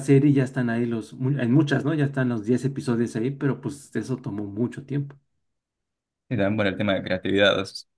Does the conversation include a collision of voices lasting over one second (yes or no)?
no